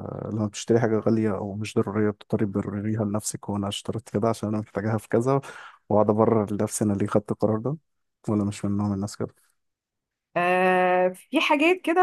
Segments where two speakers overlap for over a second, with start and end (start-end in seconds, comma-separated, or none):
none